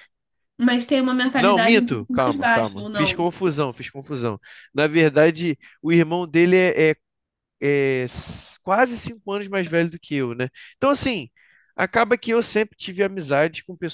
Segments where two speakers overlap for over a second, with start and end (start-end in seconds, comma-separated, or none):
1.4-3.3